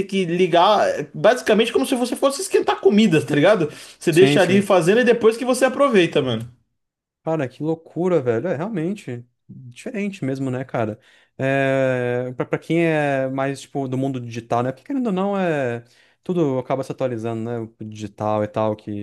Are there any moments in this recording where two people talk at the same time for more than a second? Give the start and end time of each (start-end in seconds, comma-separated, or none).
none